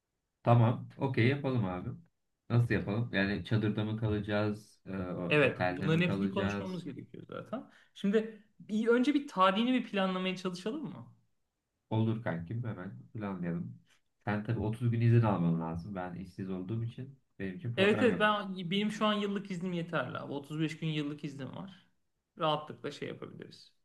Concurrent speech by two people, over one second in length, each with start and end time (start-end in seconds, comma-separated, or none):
5.4-6.9